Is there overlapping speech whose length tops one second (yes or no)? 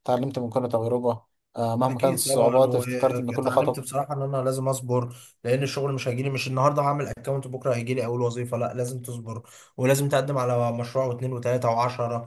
yes